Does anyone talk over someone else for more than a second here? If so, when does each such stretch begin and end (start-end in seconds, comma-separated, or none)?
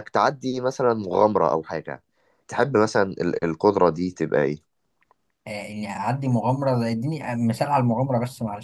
none